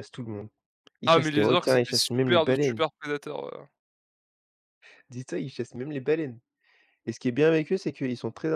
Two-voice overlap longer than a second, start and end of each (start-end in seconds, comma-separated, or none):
1.1-2.8